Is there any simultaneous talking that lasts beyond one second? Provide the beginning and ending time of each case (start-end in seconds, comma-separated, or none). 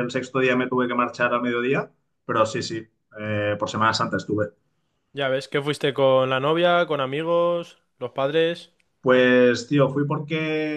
none